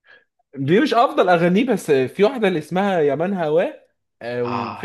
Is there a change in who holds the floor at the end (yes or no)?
yes